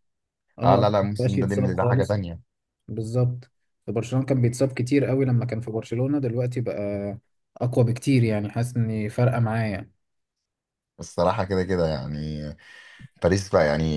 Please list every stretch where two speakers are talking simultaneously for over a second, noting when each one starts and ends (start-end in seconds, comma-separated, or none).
0.6-2.2